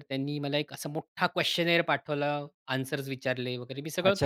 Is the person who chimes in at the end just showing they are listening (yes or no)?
no